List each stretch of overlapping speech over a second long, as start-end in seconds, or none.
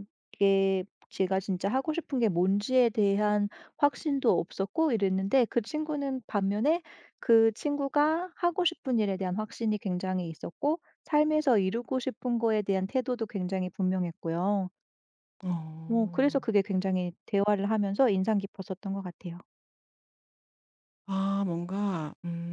none